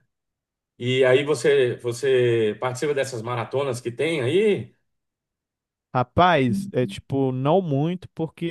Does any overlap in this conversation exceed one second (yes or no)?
no